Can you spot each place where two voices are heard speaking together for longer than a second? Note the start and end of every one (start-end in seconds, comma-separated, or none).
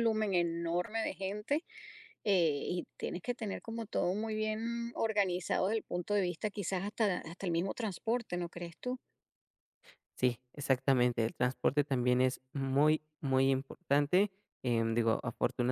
none